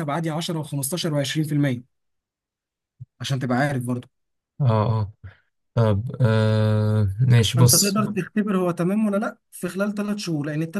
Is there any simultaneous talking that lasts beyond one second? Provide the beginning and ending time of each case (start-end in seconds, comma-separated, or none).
none